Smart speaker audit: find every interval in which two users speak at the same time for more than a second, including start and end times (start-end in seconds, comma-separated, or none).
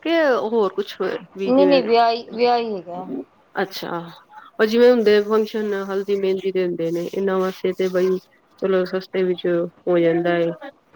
none